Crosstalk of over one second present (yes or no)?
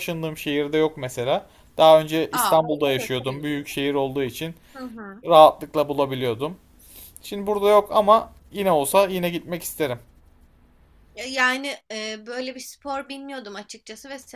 yes